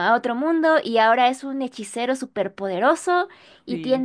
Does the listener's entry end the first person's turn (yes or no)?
no